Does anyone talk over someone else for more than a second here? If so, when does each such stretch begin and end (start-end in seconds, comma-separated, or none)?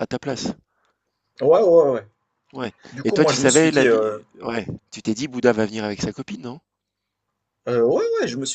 2.9-4.2